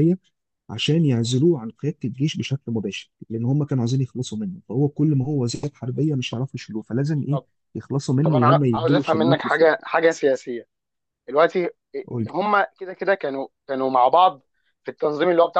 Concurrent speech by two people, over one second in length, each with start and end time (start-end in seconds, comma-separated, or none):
8.2-9.7